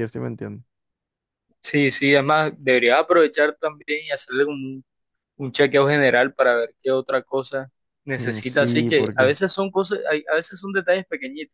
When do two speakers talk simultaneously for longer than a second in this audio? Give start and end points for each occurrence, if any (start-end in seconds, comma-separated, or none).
8.2-9.4